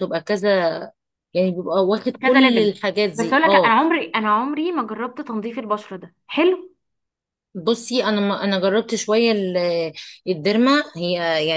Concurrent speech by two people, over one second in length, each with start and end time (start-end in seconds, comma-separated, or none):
2.2-3.8